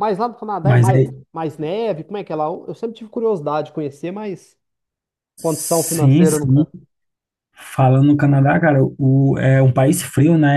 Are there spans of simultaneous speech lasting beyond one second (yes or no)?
yes